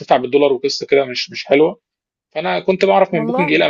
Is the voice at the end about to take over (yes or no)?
no